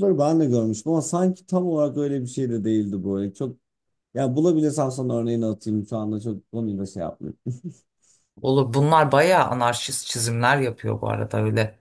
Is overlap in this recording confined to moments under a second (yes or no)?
yes